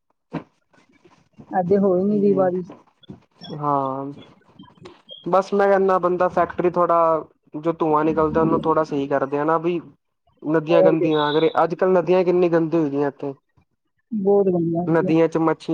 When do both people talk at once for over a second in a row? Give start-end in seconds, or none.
none